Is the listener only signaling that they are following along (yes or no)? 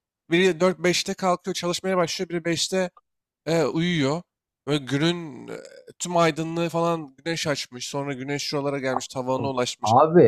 yes